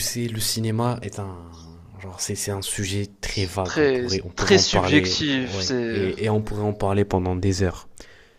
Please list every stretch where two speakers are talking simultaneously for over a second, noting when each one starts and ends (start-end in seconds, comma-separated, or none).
3.6-6.1